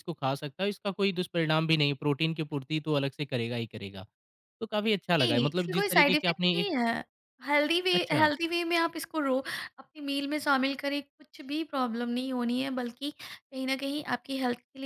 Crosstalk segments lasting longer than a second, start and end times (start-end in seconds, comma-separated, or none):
5.2-6.7